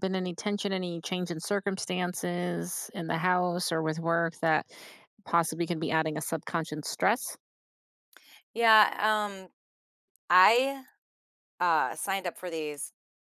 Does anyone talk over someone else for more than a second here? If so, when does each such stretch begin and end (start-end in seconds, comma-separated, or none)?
none